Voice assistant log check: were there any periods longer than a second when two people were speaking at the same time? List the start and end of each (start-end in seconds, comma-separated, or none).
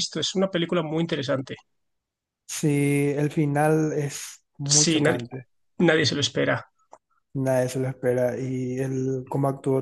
none